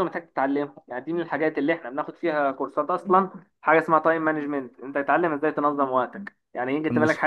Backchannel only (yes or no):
yes